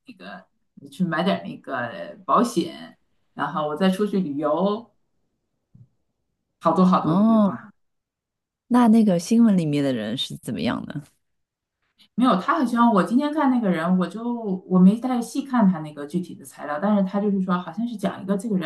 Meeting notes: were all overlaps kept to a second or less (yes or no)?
yes